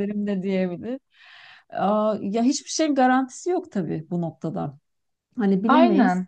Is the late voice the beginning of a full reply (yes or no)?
no